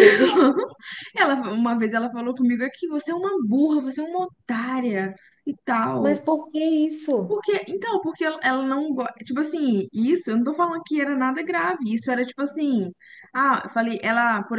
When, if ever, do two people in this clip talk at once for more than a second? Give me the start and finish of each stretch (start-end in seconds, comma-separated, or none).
none